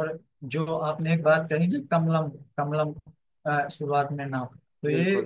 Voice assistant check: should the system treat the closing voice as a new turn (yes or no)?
no